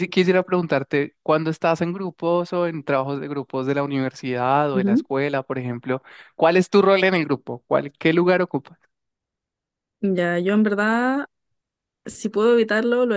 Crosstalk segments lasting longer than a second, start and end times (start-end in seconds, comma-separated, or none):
none